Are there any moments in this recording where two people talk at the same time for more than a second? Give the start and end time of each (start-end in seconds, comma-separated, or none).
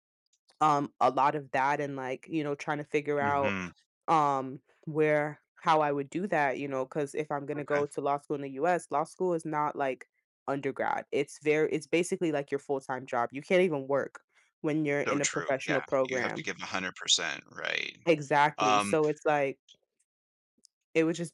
15.1-16.4